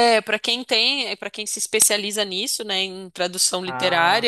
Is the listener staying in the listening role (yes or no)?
yes